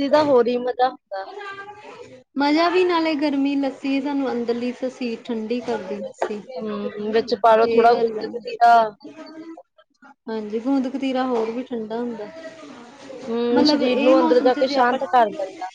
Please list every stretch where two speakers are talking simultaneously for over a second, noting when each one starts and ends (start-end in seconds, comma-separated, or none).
13.5-15.0